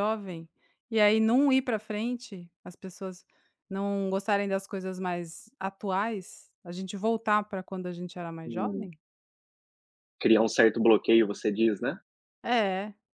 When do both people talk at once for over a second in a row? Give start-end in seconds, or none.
none